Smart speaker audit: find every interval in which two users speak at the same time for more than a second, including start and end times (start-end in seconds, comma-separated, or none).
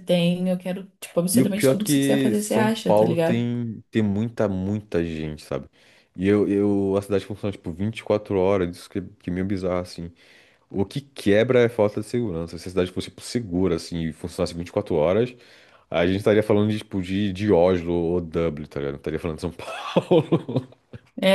1.3-3.5